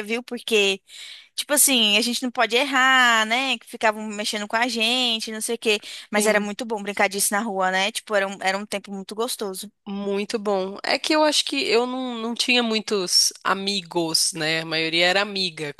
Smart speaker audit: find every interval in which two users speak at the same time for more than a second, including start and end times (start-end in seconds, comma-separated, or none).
none